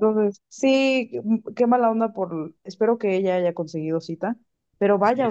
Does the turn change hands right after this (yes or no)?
no